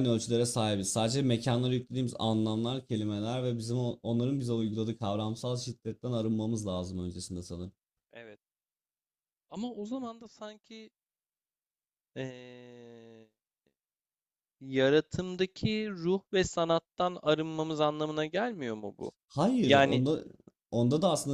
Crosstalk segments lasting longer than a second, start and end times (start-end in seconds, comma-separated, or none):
none